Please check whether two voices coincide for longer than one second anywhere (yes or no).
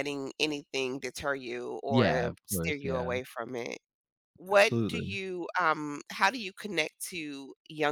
yes